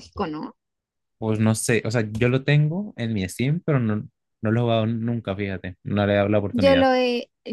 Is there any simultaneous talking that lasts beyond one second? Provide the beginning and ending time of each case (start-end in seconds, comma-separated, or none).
none